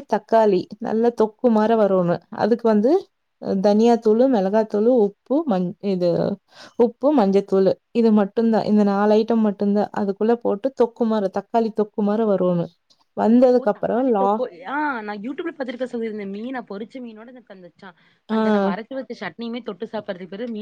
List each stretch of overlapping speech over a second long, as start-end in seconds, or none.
none